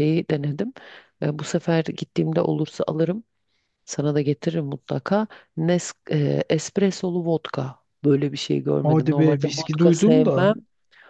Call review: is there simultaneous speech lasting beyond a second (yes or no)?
yes